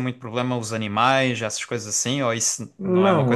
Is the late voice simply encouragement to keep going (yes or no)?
no